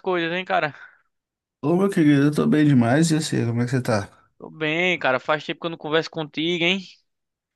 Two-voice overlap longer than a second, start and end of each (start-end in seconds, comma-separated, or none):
none